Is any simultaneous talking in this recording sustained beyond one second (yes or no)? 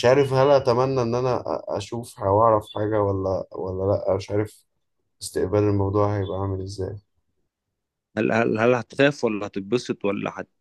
no